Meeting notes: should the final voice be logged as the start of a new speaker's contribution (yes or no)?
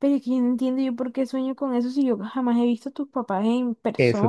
yes